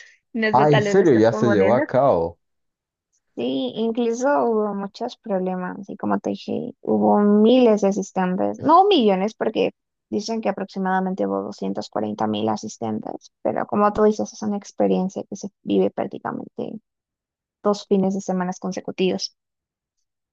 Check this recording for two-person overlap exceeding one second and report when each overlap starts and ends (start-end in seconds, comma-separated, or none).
0.5-1.8